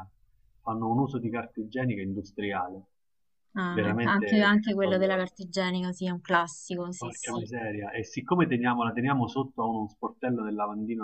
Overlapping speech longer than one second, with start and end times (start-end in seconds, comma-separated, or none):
3.7-5.2